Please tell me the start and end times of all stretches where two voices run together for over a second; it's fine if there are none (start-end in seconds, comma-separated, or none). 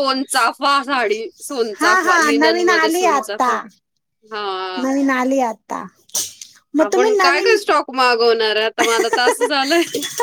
1.8-3.5